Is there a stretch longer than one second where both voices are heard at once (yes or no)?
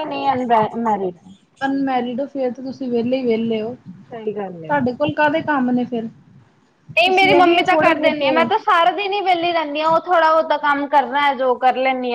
yes